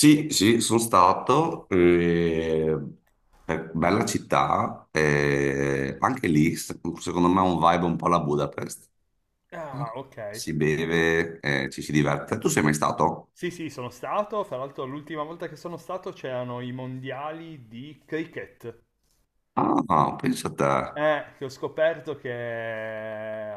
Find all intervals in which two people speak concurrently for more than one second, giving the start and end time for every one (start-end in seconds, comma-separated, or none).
none